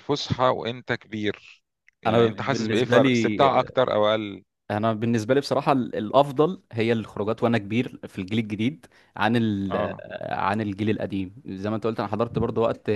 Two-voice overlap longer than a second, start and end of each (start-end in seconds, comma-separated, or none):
2.1-3.4